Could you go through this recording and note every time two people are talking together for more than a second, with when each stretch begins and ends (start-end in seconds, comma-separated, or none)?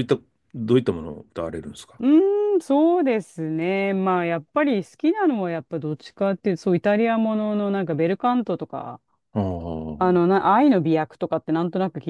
none